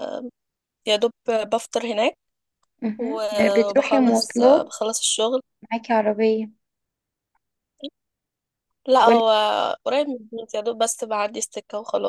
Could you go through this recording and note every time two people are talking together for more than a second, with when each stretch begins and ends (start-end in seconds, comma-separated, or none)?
3.0-4.7